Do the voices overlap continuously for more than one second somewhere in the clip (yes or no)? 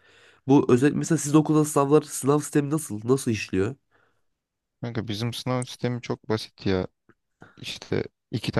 no